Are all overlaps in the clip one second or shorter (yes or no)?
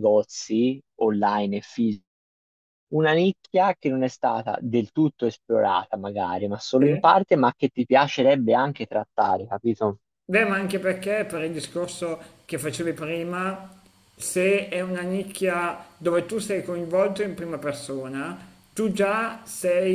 yes